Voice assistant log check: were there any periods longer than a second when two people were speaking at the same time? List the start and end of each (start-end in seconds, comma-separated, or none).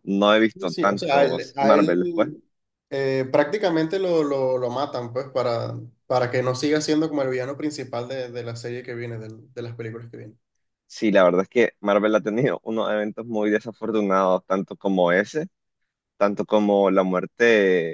0.5-2.3